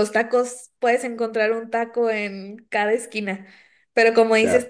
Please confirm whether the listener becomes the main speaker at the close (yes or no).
no